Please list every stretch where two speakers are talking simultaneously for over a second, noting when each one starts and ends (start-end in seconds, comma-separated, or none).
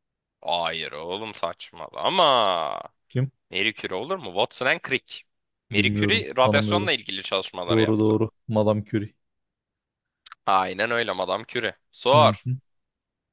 5.7-6.9